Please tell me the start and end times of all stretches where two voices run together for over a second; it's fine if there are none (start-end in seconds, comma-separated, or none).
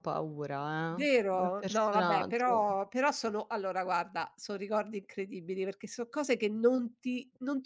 0.9-2.6